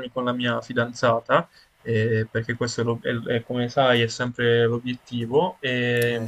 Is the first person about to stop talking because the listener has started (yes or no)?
no